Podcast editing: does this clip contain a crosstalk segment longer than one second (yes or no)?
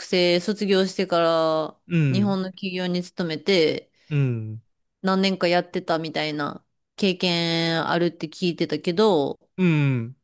no